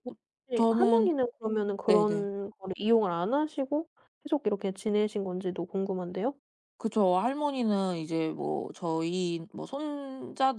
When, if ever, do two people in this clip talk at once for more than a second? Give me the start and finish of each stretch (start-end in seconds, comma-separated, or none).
none